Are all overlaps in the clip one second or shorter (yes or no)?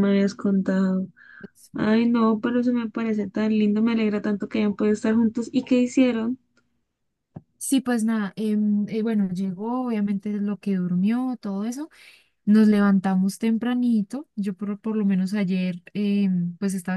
yes